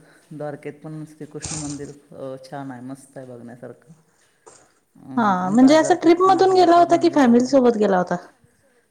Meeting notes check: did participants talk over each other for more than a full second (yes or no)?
yes